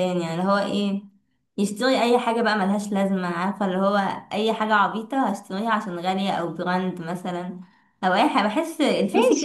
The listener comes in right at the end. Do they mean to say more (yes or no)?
yes